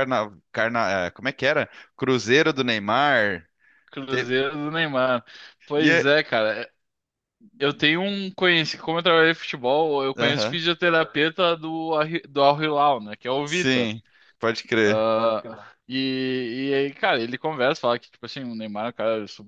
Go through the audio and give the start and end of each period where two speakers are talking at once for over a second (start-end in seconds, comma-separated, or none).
none